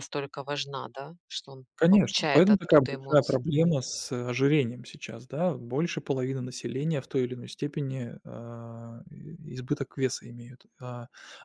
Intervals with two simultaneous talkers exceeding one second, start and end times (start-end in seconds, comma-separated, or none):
1.8-3.4